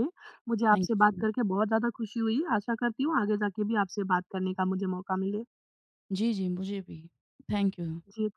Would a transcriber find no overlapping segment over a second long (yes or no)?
yes